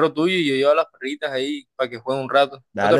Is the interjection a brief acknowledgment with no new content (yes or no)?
no